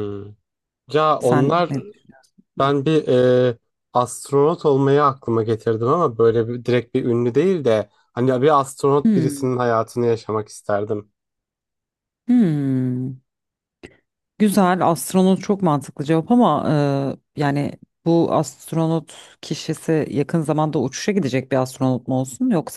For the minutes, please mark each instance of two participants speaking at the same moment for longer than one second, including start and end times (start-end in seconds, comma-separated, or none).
none